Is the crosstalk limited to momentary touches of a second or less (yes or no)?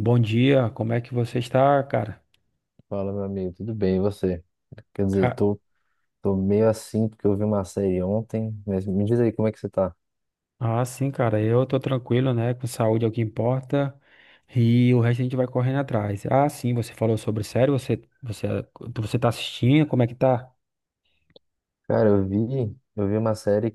yes